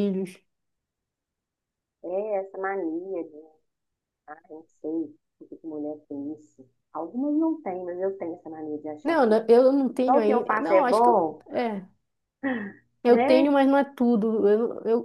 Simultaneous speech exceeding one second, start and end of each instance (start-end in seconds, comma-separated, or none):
10.1-11.4